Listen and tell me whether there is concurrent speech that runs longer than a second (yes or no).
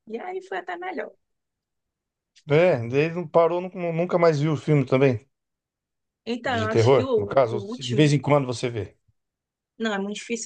yes